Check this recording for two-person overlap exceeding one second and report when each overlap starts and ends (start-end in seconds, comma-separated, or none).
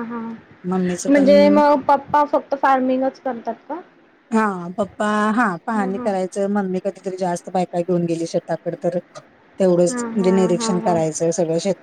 9.9-11.2